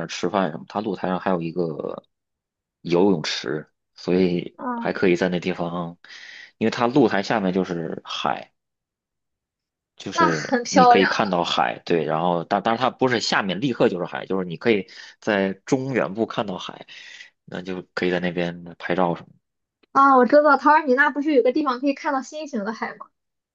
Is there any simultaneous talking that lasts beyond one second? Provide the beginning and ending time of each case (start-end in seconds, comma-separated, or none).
10.1-11.4